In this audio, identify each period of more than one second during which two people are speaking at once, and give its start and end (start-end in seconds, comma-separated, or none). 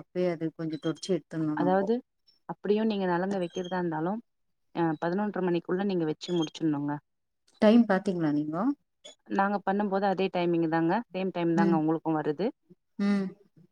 none